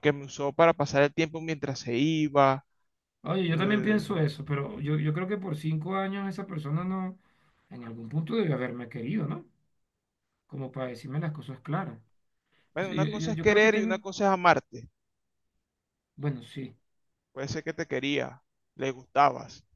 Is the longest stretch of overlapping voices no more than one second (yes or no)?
no